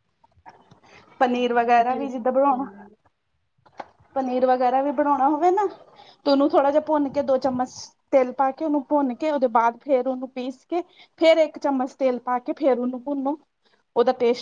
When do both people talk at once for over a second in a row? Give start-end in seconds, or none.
1.4-2.7